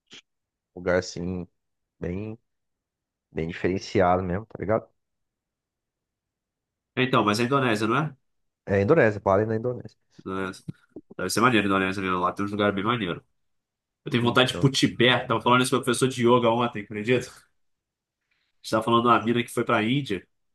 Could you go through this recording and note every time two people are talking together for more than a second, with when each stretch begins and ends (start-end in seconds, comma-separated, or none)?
none